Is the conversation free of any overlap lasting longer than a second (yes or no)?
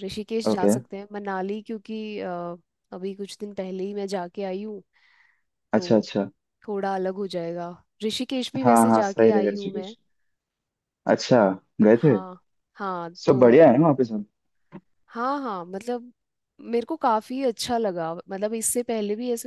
no